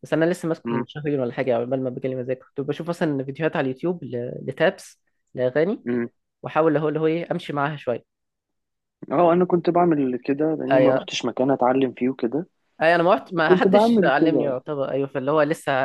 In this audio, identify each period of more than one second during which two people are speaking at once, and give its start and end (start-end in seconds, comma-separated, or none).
13.4-14.6